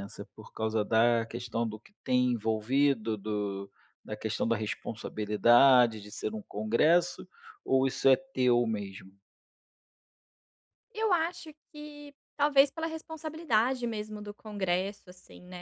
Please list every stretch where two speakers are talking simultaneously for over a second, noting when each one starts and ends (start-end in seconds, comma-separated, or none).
none